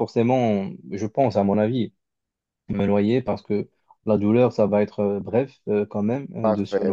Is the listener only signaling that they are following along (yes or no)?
no